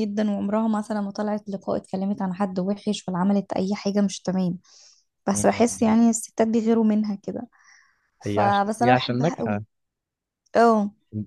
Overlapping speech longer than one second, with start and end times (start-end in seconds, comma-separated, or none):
8.2-9.6